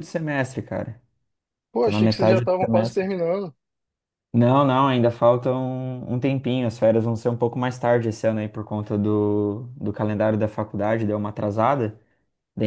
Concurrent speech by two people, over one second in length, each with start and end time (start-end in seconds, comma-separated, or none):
1.8-3.1